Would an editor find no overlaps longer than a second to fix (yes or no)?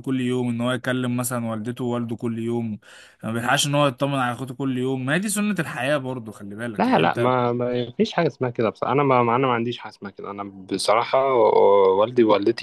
yes